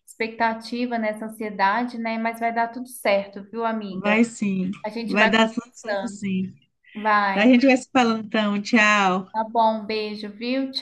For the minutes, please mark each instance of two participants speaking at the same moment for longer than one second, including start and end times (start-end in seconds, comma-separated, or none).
4.8-6.2